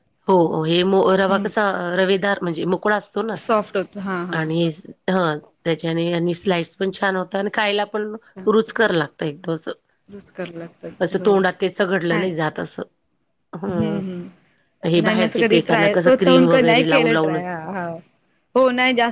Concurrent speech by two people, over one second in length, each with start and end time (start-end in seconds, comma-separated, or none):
14.9-17.6